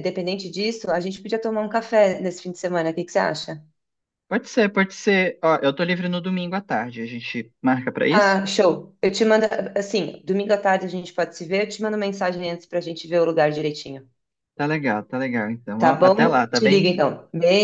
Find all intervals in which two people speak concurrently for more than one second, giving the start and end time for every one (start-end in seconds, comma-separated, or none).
15.8-17.0